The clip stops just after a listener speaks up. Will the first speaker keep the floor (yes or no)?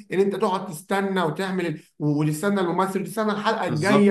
yes